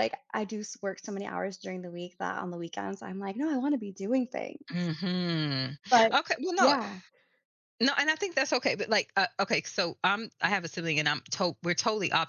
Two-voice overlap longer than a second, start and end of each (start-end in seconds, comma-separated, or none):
none